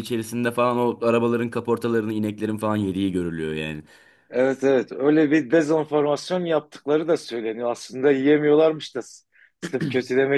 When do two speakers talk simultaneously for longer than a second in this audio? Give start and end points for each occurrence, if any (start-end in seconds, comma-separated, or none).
none